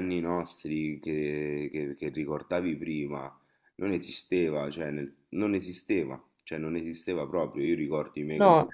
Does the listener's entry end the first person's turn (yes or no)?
no